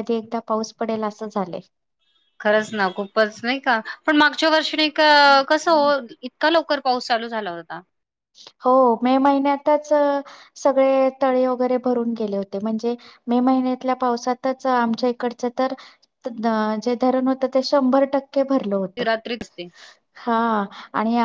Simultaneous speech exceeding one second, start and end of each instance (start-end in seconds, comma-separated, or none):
none